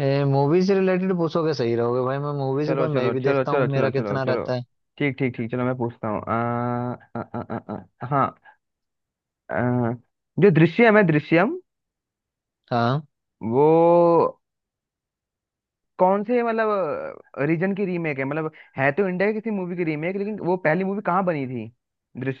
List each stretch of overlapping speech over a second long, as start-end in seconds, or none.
2.7-4.5